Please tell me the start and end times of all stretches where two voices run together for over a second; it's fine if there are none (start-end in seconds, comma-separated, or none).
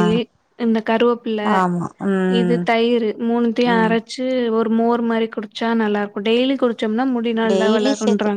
none